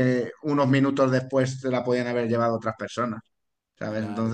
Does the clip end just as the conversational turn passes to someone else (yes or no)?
yes